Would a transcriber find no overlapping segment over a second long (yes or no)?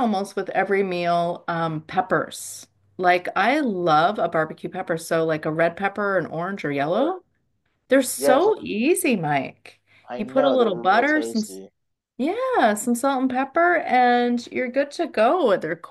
no